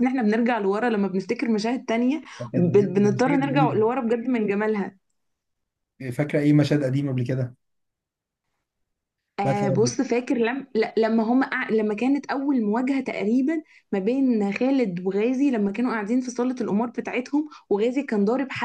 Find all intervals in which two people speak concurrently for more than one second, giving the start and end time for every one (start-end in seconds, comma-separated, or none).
2.4-3.8